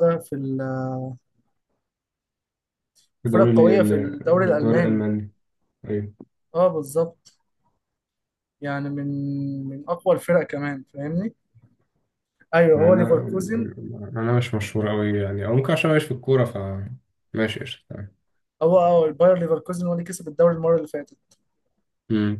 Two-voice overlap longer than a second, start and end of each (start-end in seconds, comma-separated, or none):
3.2-5.0